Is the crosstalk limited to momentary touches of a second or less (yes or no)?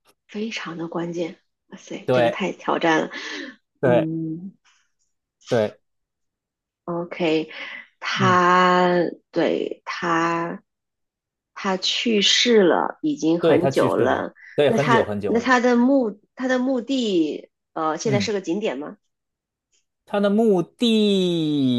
no